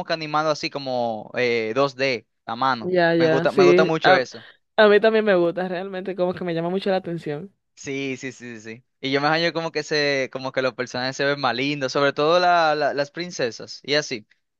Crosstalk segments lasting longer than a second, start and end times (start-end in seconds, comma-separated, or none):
2.8-4.2